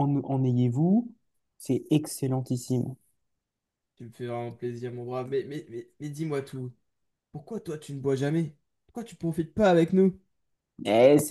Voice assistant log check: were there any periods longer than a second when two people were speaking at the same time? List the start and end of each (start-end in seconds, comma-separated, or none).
none